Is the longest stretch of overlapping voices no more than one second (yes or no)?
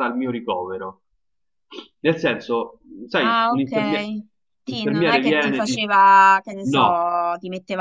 no